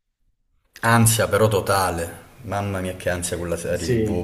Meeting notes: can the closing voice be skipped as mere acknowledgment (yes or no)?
no